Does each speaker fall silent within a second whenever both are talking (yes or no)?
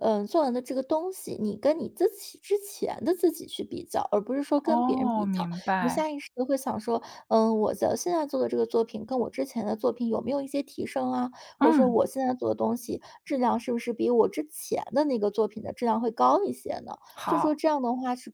no